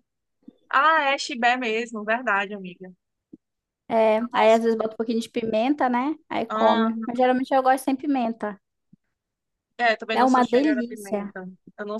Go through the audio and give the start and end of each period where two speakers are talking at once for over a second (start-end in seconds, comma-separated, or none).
10.1-11.3